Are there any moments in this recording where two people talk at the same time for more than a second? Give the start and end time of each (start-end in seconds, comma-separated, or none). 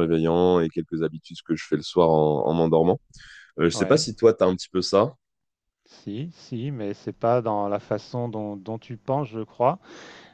none